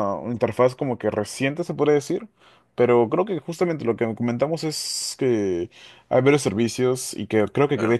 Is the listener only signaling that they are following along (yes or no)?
yes